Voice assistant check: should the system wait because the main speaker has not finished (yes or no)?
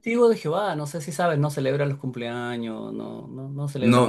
no